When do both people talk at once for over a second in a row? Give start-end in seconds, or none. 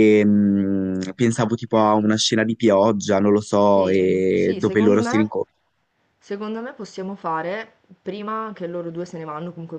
3.7-5.3